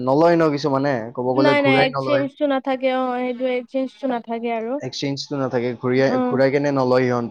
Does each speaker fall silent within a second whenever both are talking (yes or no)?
yes